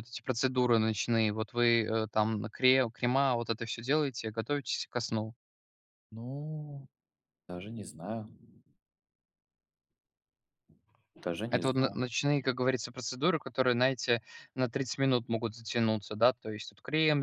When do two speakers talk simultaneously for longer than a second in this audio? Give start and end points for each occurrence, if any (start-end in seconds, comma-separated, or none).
none